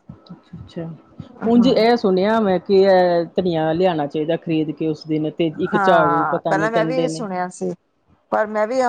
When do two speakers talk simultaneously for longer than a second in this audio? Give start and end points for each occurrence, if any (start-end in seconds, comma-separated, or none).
5.7-7.3